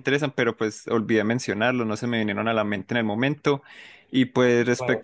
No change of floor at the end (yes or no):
yes